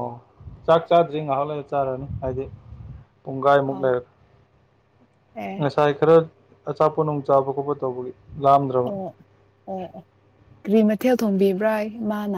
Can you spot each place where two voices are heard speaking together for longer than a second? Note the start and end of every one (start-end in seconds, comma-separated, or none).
none